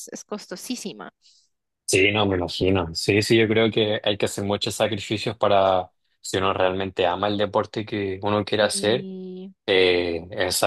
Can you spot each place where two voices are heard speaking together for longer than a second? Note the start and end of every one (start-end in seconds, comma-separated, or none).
none